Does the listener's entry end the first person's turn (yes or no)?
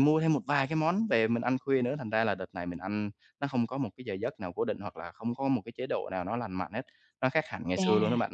yes